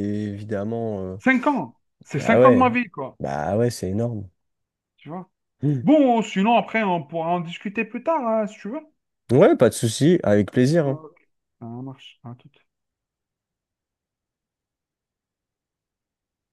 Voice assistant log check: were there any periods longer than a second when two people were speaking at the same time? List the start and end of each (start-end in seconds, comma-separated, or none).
none